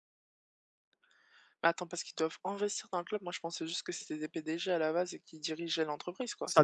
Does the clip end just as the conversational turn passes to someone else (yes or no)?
yes